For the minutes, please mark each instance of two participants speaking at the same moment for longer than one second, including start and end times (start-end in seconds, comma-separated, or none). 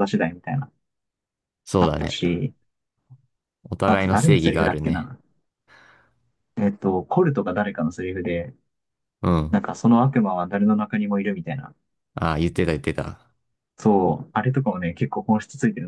3.9-5.1